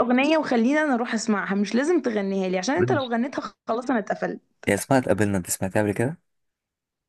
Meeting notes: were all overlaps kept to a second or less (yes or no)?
yes